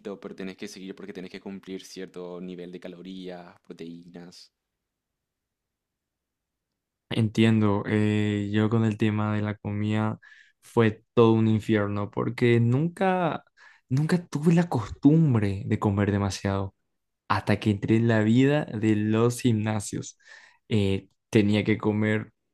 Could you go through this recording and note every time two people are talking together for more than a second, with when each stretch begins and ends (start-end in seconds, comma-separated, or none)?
none